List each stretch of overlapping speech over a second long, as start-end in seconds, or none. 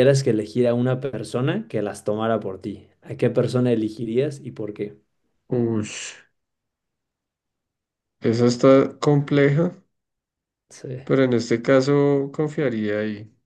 none